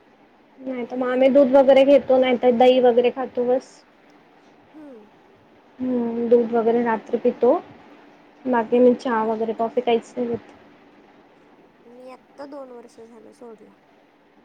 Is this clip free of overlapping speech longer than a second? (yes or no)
yes